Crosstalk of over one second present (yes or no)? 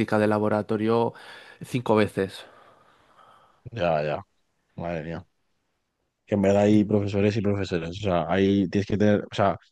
no